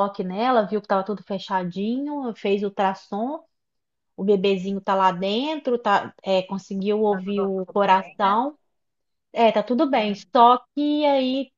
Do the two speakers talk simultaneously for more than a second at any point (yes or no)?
yes